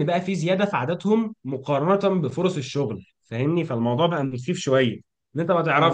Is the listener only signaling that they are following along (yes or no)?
yes